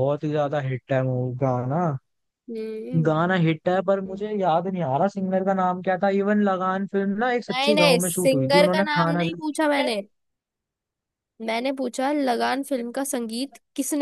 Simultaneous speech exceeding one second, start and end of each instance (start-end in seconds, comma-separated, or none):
7.5-9.2